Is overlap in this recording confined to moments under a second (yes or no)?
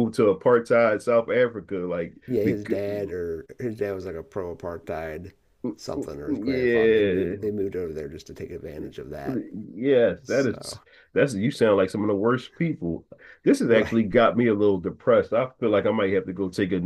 no